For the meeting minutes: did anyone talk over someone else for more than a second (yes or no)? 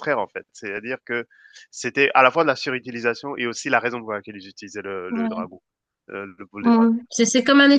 no